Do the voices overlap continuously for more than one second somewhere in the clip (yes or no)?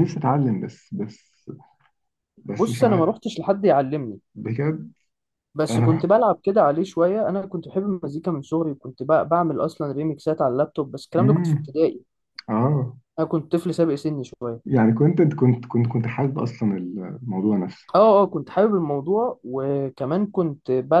no